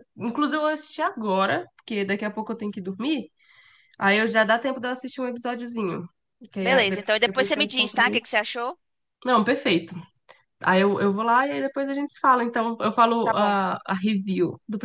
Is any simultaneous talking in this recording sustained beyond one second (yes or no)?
yes